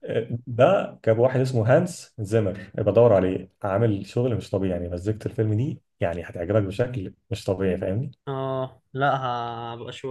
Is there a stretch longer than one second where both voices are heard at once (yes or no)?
no